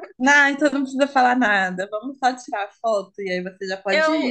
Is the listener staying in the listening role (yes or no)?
no